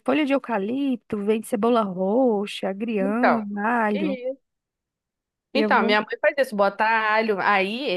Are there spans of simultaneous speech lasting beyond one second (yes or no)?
no